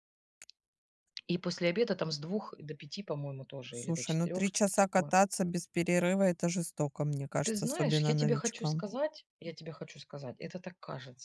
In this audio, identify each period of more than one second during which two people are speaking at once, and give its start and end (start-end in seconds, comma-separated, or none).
3.7-5.1, 7.4-8.9